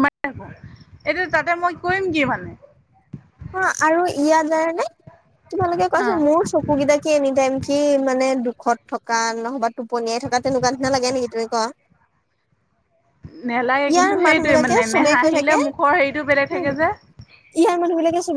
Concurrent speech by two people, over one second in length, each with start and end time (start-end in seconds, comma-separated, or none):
13.9-15.6